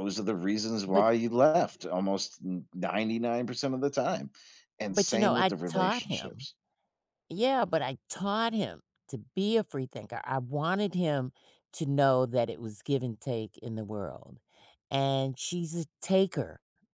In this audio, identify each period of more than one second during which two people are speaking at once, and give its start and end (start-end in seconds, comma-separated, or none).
4.9-6.5